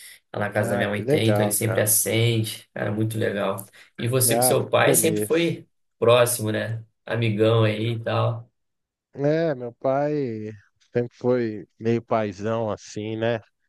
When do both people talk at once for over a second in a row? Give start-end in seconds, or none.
0.6-1.9, 4.3-5.5